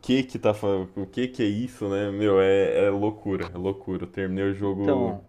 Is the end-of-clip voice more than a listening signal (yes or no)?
no